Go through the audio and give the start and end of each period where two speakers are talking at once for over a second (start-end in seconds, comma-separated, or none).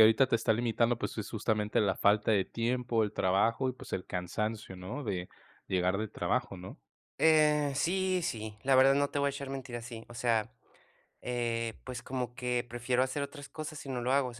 none